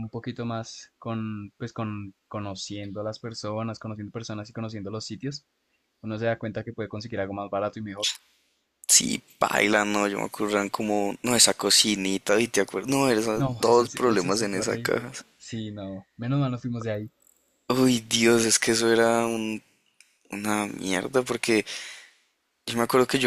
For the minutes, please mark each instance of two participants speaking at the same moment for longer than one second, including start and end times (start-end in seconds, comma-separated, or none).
13.3-15.1